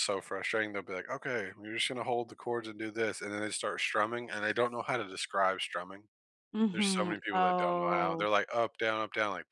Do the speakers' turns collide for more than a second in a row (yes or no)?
yes